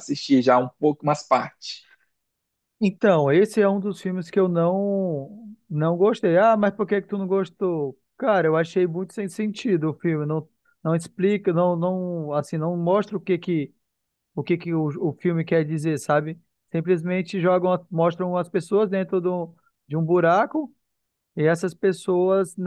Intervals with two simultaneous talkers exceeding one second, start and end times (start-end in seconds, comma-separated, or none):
none